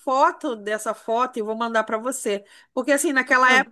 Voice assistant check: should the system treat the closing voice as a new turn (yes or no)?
no